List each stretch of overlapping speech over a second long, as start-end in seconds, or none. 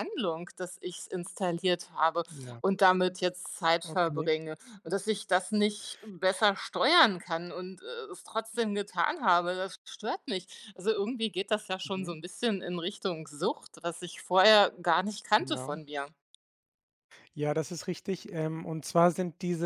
none